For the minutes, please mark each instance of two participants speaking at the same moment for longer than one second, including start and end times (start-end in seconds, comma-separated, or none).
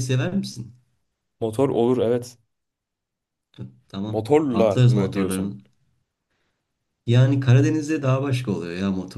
4.1-5.6